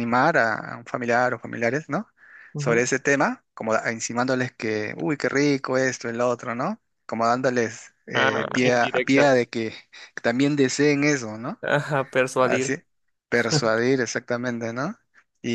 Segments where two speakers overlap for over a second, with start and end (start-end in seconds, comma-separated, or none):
8.1-9.5